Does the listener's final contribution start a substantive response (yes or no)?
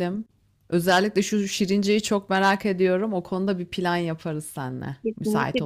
yes